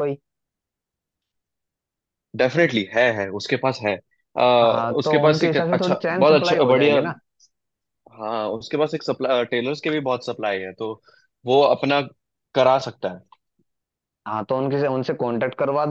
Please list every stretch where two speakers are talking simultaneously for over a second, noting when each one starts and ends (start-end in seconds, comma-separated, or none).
5.0-7.0